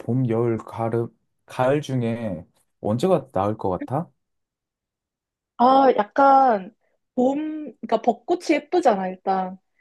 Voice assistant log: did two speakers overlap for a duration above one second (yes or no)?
no